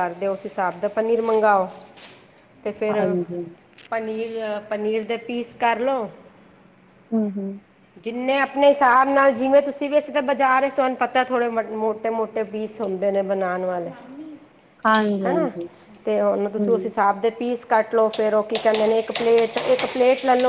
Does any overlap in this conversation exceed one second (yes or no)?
no